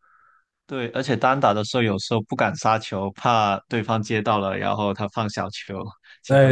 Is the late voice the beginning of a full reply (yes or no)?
yes